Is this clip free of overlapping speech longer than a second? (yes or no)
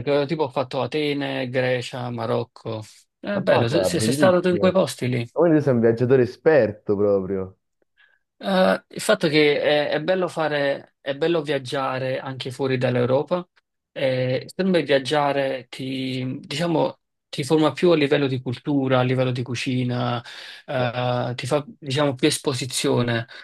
no